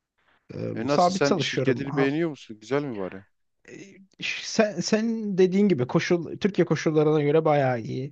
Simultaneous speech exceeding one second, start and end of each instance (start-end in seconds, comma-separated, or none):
0.7-2.1